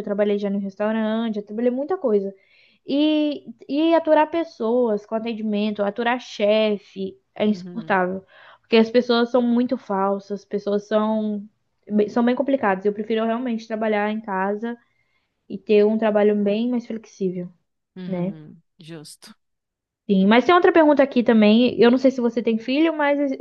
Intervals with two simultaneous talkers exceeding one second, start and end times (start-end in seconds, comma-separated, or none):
none